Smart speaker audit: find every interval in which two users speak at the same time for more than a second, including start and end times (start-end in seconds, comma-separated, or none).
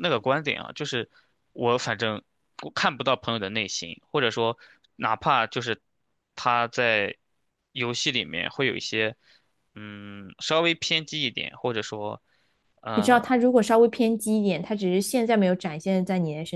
none